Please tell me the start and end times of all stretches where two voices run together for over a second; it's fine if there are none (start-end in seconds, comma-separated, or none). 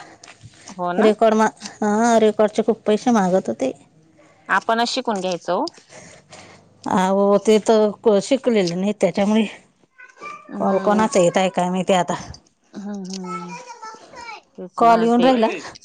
none